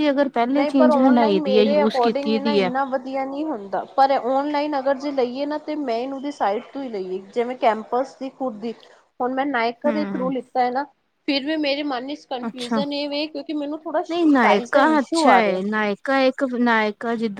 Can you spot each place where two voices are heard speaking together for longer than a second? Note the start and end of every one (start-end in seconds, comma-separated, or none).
0.6-2.7, 14.1-15.6